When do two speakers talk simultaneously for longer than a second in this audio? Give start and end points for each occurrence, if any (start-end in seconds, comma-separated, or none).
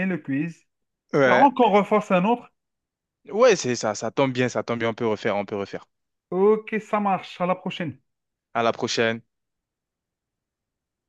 none